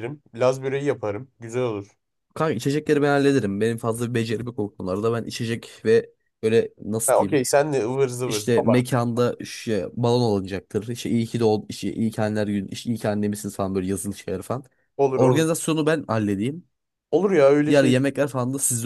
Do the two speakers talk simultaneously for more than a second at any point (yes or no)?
no